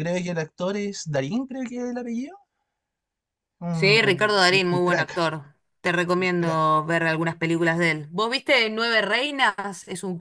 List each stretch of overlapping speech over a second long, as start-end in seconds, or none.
3.7-5.2